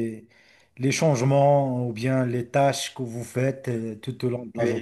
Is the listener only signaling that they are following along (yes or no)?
no